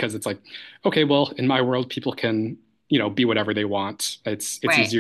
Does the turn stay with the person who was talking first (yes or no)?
yes